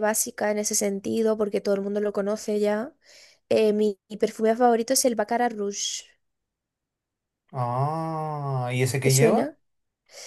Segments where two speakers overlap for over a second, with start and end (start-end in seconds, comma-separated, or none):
none